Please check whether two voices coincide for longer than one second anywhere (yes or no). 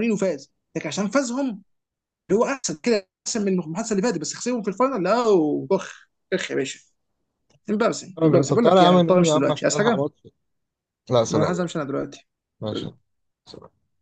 yes